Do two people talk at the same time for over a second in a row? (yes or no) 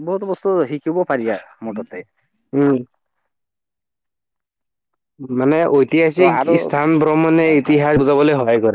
no